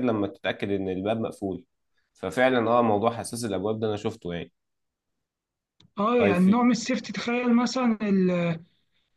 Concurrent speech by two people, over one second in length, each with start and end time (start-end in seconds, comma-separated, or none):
none